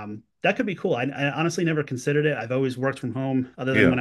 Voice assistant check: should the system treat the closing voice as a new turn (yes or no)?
no